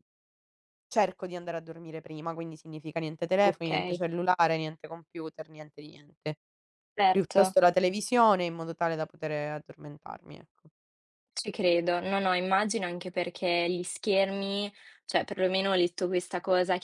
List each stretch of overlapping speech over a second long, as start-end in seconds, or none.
none